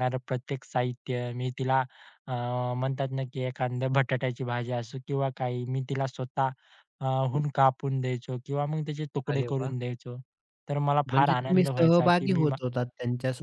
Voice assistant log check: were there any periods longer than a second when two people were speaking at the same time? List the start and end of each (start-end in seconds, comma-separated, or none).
11.1-12.6